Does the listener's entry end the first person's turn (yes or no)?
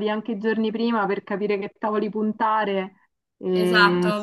yes